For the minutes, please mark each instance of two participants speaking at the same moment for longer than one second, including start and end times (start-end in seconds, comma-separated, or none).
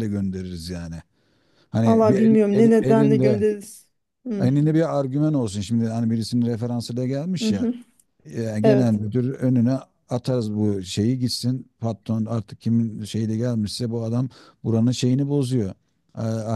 1.9-3.5